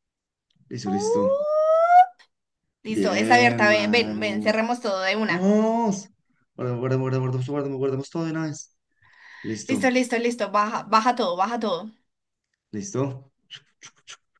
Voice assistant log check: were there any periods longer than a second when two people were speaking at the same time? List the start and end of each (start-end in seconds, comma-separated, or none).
2.9-4.6